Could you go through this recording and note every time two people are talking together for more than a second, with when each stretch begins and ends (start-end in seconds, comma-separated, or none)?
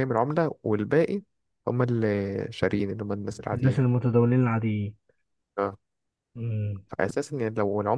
none